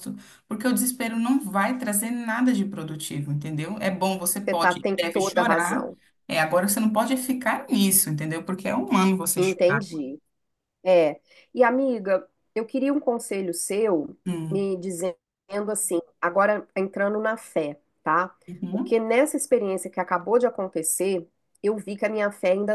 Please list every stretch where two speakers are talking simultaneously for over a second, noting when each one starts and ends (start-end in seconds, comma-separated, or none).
4.4-5.9